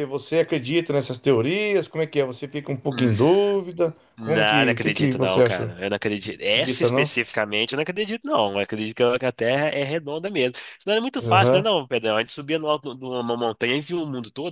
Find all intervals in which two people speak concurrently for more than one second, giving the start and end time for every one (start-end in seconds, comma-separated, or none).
4.2-5.7